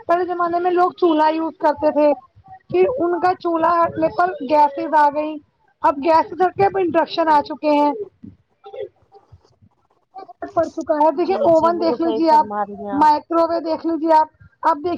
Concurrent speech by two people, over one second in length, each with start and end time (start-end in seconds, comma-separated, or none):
11.3-12.9